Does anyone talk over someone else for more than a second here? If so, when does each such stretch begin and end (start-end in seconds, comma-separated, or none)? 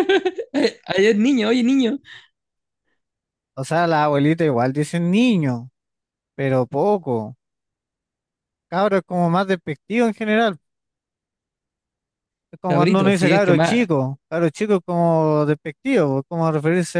12.6-13.8